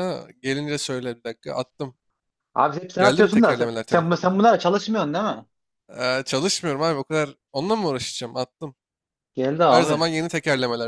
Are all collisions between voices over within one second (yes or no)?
no